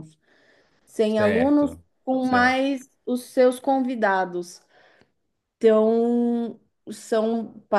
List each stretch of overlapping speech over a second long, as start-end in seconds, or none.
1.1-2.7